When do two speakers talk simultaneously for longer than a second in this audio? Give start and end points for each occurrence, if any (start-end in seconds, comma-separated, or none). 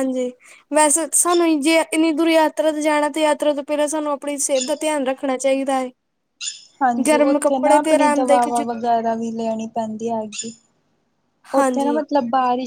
7.1-8.7